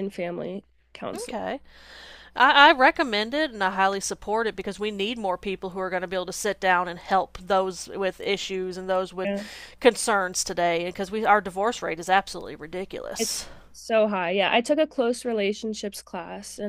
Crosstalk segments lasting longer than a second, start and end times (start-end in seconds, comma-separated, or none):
none